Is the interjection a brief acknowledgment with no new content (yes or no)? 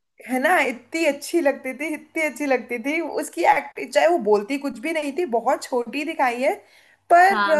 yes